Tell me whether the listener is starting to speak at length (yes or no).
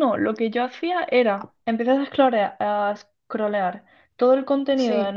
no